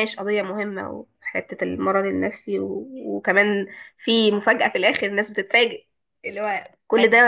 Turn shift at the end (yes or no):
no